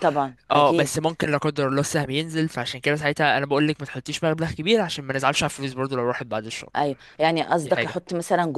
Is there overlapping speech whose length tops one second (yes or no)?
no